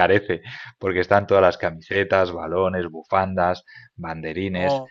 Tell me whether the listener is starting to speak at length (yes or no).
no